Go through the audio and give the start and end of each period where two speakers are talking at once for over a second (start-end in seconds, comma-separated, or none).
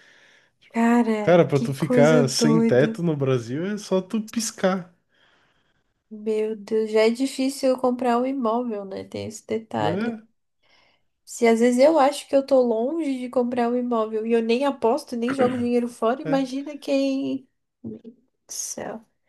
1.2-3.0